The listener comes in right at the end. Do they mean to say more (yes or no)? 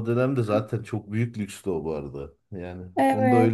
no